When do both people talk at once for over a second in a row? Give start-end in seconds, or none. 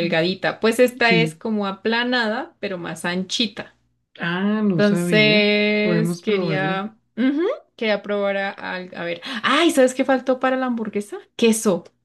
4.8-6.9